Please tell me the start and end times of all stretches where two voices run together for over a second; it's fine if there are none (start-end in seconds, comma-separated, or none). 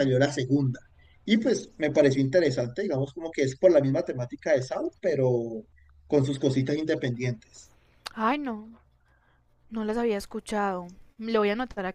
none